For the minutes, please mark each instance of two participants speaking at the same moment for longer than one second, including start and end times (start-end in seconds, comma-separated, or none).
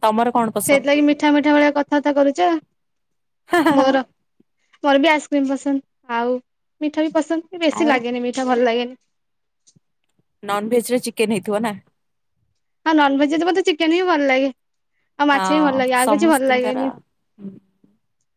15.3-16.8